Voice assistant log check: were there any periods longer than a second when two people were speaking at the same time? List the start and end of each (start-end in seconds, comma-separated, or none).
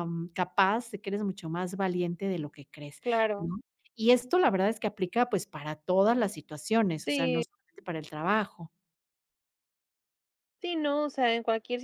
none